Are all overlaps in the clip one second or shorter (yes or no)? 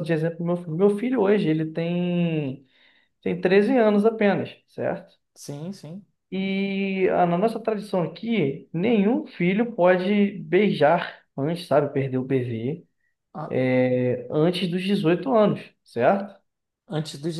yes